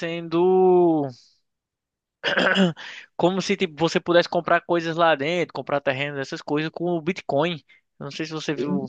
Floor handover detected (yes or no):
no